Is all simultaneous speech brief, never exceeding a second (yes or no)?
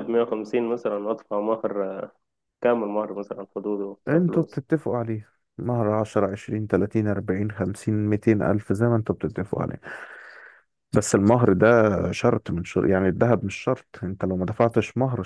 yes